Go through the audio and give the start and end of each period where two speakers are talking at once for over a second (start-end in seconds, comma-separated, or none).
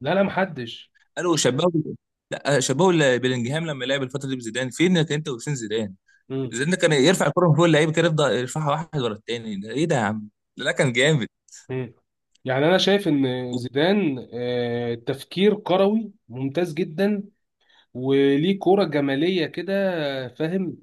none